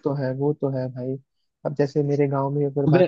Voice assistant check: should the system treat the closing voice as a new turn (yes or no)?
no